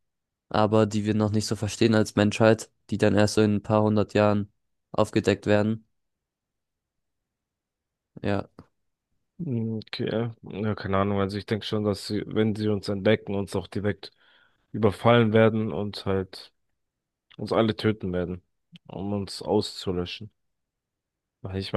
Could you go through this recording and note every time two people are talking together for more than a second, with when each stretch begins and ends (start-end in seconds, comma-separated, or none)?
none